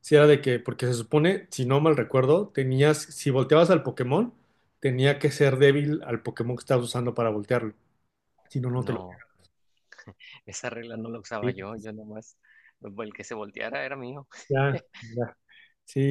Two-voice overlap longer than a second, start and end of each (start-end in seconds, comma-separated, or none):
none